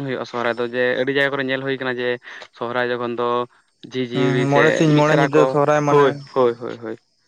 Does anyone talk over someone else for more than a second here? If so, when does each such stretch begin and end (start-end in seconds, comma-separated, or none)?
4.1-6.1